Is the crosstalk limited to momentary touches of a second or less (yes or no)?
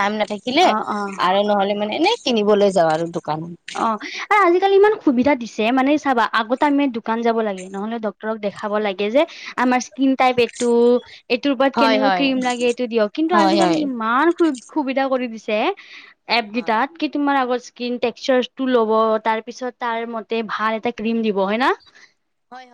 yes